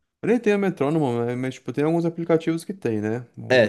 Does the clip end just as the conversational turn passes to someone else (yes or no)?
no